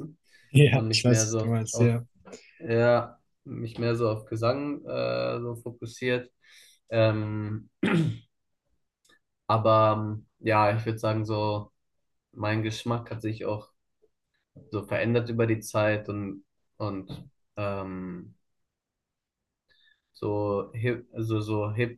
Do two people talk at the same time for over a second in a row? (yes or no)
yes